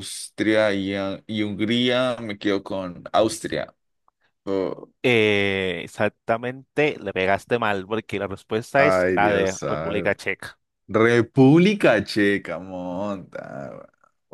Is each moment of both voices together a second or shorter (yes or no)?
no